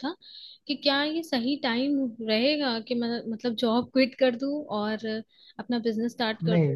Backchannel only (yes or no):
no